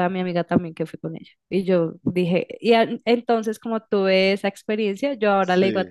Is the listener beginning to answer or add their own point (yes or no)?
no